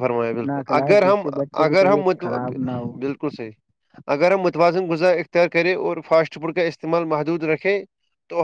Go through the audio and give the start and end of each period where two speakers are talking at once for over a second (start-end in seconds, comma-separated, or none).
none